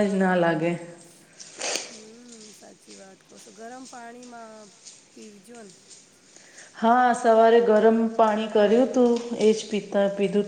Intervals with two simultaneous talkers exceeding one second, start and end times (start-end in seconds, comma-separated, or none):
none